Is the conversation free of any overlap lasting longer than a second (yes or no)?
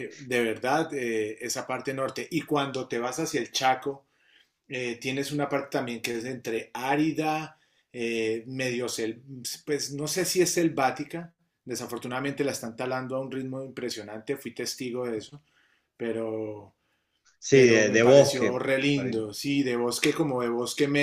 no